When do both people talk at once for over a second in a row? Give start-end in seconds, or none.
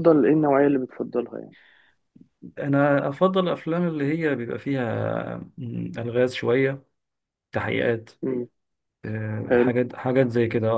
none